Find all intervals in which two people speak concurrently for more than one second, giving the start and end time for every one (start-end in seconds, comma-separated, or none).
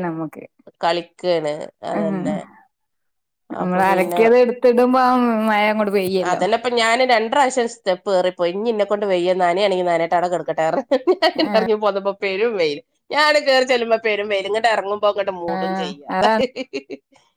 none